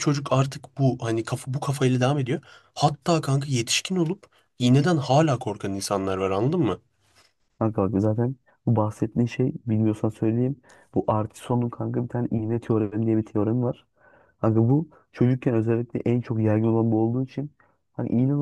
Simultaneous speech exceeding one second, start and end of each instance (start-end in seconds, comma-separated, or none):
none